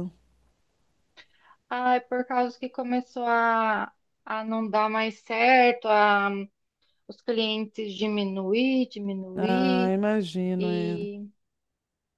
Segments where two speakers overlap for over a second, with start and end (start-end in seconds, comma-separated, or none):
none